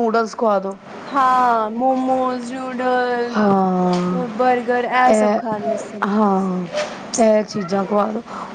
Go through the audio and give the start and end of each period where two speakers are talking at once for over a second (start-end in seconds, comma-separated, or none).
none